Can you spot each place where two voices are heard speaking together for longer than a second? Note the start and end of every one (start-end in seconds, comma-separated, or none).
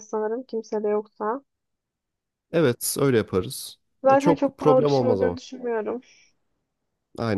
4.0-5.4